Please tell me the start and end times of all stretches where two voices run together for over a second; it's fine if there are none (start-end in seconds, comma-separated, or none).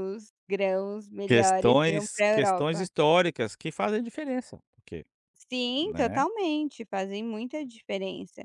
1.2-2.9